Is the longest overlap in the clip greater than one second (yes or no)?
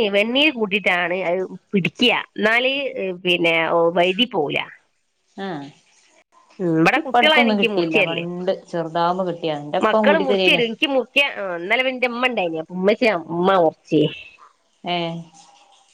yes